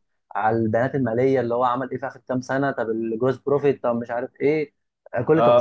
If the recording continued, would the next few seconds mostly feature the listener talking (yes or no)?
yes